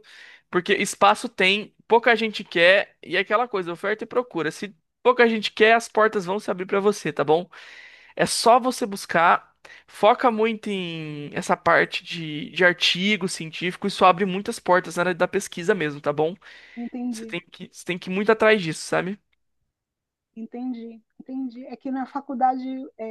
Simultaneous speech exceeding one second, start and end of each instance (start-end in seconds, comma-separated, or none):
none